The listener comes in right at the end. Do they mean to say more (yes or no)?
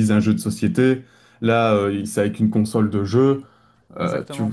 no